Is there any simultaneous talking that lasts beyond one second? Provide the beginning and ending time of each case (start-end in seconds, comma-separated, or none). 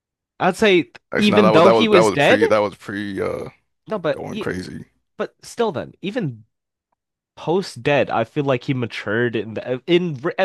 1.1-2.4